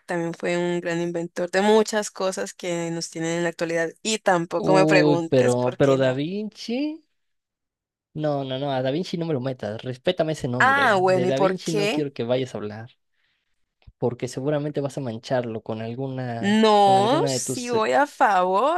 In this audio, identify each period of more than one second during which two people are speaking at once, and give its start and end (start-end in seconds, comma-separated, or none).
4.5-6.2, 10.6-12.1, 16.4-17.7